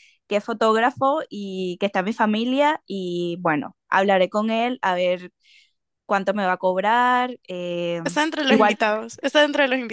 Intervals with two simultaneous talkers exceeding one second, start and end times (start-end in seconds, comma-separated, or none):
none